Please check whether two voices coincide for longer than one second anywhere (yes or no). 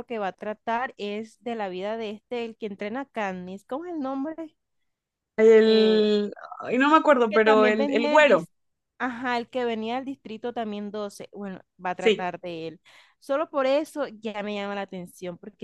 yes